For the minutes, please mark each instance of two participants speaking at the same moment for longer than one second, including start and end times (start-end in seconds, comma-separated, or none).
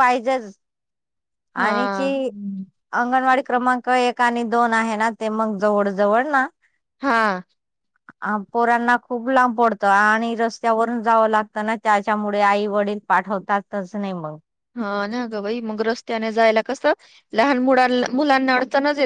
none